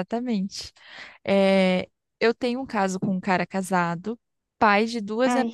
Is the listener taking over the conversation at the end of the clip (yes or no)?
no